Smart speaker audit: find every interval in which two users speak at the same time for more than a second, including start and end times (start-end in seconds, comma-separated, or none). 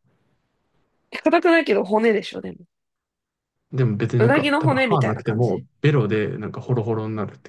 4.2-5.6